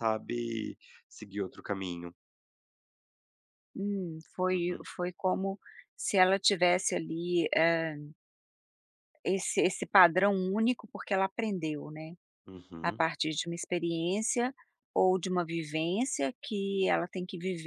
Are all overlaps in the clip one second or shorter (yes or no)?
yes